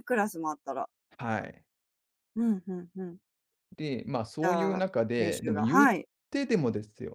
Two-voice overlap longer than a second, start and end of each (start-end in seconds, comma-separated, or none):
4.4-5.9